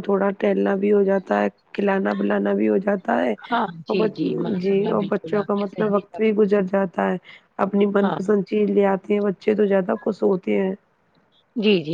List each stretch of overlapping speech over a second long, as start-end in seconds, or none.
4.6-6.2